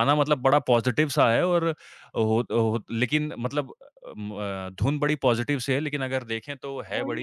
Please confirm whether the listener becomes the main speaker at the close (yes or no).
yes